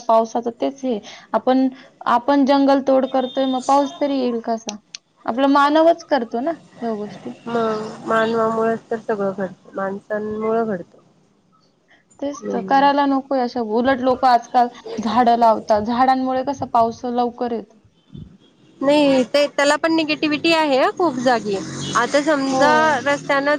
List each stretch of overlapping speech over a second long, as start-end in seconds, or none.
none